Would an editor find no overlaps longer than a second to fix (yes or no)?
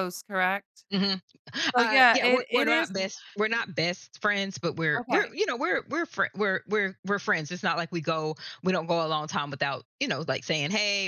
no